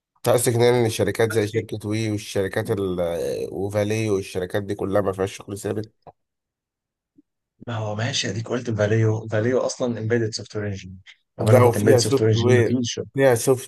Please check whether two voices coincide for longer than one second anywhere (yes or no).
yes